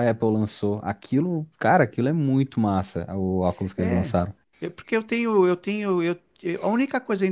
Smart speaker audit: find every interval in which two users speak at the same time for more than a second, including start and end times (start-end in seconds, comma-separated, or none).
none